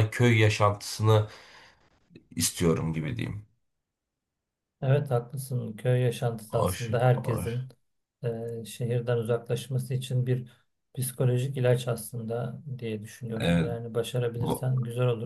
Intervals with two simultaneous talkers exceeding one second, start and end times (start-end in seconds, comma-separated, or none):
6.5-7.7